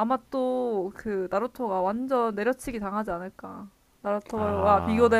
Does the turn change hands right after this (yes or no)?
no